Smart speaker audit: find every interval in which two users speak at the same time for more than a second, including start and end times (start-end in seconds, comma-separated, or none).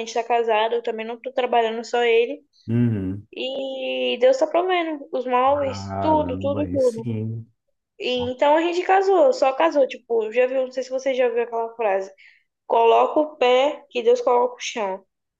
5.5-7.1